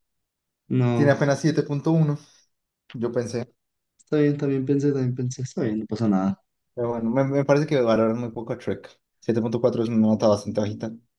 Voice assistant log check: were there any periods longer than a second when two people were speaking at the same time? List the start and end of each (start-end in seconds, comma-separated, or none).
none